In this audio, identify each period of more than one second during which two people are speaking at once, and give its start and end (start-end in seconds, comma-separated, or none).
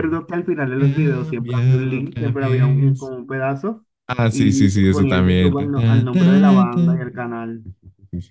0.8-3.1, 4.3-7.7